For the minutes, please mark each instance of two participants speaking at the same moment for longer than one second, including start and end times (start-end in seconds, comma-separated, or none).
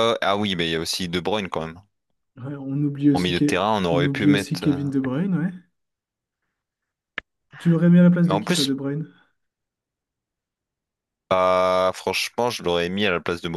3.1-4.8